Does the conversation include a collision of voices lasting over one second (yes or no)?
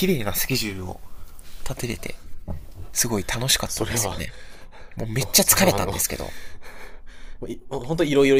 no